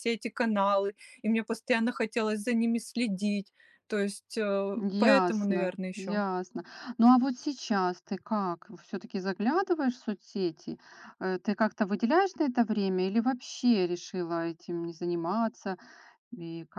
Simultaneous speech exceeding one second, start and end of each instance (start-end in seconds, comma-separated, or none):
4.7-6.2